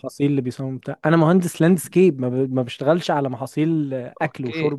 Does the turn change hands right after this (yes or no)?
yes